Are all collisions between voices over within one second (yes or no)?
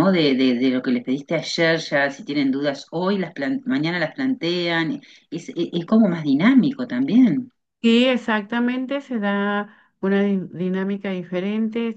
yes